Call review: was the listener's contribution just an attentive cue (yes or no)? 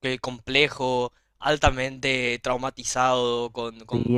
no